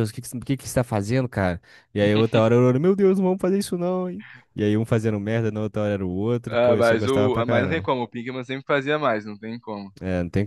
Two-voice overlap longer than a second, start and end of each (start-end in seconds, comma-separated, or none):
6.5-7.9